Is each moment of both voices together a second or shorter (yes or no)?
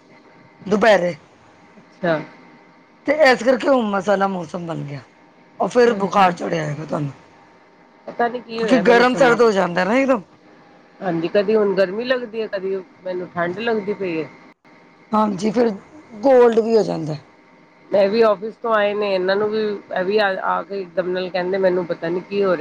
yes